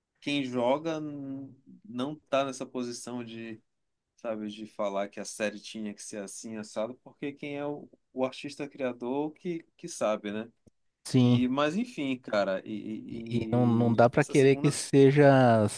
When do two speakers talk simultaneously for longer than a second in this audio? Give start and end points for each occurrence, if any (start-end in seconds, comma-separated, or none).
13.1-14.8